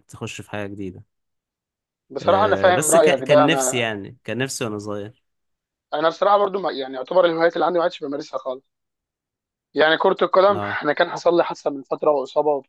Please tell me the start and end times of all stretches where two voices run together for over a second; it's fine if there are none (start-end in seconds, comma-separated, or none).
2.2-3.9